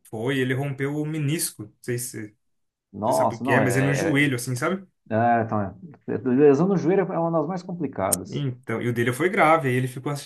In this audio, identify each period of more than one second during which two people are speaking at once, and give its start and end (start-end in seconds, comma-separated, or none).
3.0-4.3